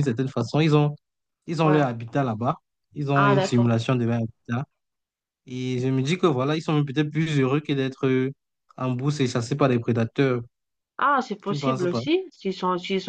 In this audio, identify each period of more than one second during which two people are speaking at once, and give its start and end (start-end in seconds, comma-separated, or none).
none